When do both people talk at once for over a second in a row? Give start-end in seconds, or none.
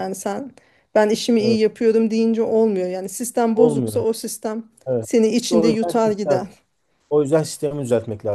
5.0-6.4